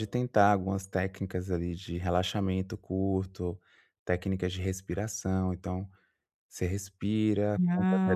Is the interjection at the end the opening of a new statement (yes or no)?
no